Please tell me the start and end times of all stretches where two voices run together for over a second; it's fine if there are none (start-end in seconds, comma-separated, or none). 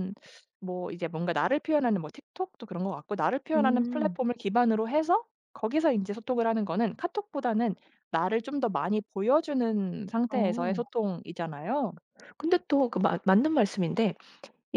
none